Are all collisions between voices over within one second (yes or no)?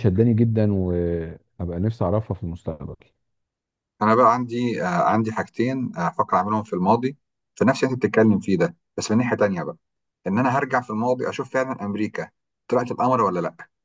yes